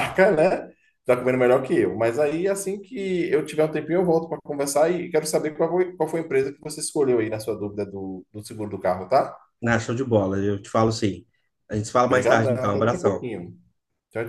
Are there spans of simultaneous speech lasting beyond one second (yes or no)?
yes